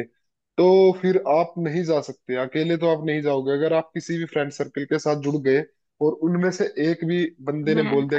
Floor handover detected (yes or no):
yes